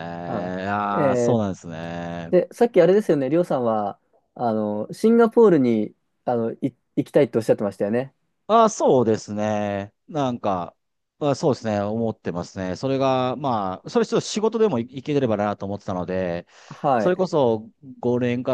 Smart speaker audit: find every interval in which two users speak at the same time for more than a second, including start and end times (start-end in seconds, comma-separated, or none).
none